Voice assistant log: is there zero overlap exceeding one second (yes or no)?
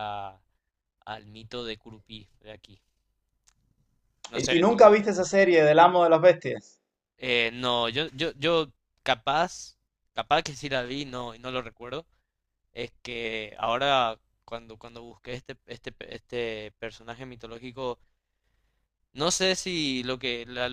yes